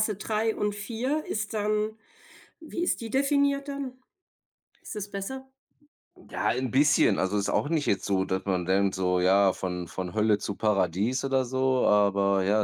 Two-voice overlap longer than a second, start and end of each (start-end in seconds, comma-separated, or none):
none